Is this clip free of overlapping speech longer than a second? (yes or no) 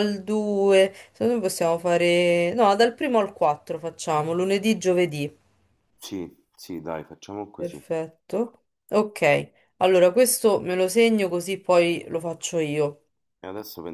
yes